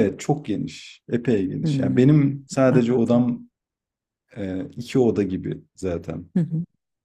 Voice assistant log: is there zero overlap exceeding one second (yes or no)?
no